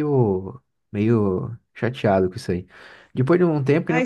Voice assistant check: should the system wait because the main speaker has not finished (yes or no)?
no